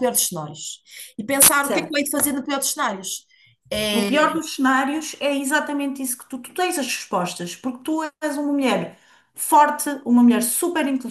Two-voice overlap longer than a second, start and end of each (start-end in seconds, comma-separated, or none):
none